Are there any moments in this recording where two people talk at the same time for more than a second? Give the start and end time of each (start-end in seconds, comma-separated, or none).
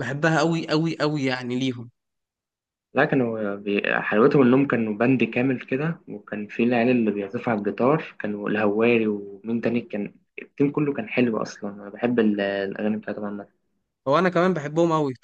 none